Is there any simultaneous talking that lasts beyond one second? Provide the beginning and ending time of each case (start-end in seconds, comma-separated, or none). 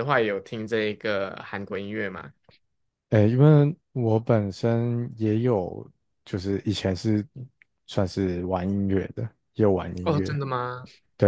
none